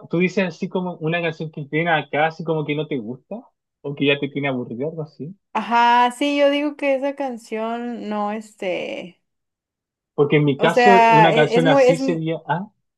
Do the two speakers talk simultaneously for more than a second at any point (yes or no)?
yes